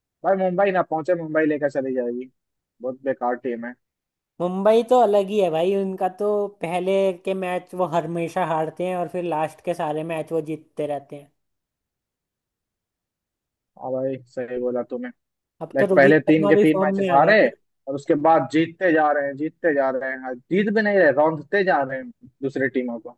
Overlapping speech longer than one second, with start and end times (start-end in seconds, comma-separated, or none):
15.8-17.4